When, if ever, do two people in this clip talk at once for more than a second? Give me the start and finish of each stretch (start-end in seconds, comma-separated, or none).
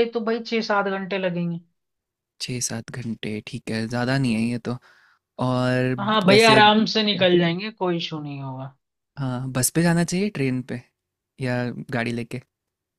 6.0-7.4